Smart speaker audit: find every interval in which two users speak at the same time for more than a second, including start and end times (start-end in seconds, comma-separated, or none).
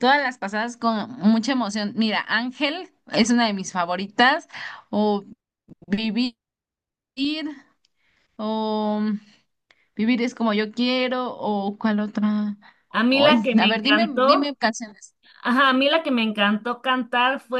13.1-14.6